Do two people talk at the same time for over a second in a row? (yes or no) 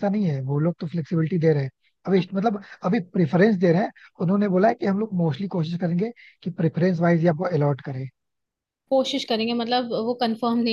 no